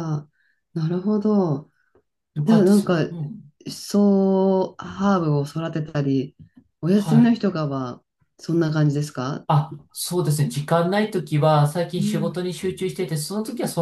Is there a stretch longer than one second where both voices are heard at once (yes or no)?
no